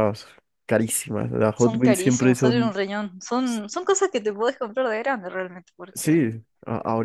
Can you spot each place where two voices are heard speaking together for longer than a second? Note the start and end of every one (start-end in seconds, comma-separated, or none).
1.5-2.7